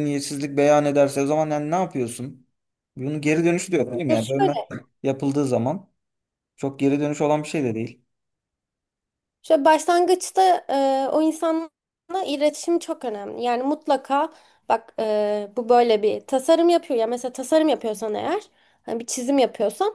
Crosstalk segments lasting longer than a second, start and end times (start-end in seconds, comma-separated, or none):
none